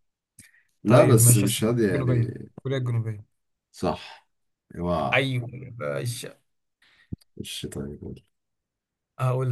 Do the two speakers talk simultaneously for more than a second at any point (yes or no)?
yes